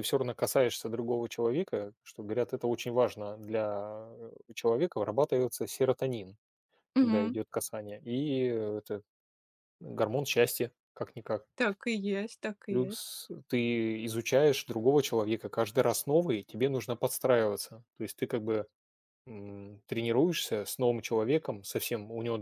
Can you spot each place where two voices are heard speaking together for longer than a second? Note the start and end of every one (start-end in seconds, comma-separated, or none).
none